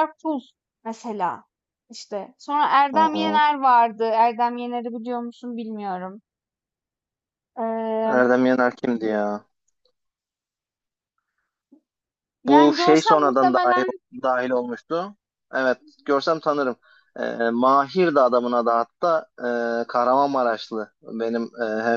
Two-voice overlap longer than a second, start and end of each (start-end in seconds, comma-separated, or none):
12.5-13.8